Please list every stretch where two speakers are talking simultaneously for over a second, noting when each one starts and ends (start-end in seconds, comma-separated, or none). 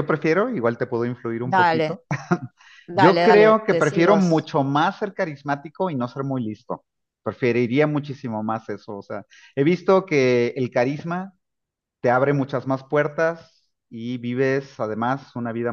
2.9-4.5